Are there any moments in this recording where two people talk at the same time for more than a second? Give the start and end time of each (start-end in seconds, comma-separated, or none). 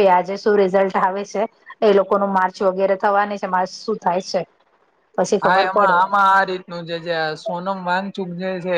none